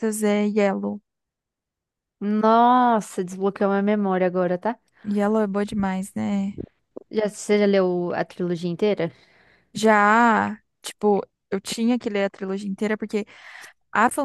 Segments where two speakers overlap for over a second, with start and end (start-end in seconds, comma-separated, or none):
none